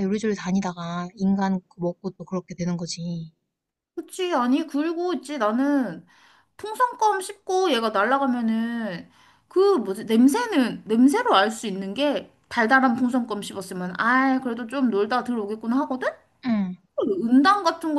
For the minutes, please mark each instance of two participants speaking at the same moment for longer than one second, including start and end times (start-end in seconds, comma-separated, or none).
none